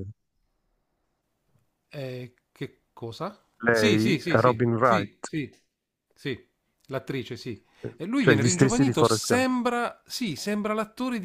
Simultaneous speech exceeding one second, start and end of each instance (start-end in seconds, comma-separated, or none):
3.6-5.3, 8.2-9.5